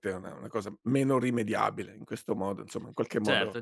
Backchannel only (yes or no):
no